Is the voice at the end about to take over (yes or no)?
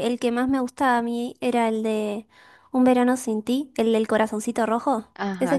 yes